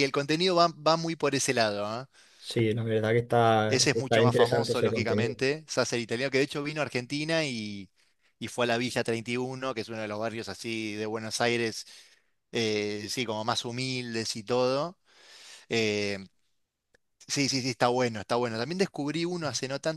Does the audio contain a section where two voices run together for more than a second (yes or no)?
yes